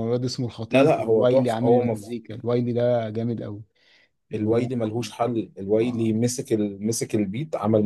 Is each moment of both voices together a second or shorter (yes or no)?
no